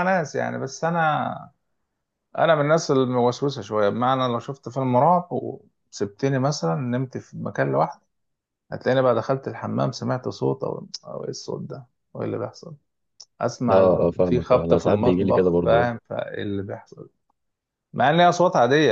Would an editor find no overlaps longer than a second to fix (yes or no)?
no